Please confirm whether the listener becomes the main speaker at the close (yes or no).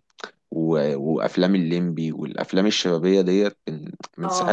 yes